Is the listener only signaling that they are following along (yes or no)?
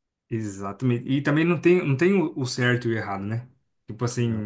yes